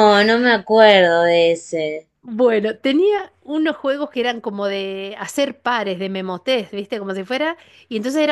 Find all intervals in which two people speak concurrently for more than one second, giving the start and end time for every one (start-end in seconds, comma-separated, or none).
none